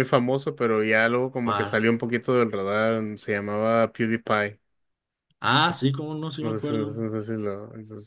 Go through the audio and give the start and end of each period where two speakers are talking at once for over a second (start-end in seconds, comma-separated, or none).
none